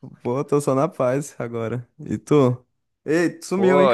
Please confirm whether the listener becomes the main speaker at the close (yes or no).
yes